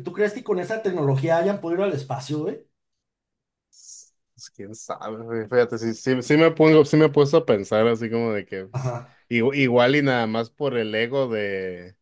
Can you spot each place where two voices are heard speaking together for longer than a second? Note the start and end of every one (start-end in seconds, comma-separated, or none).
none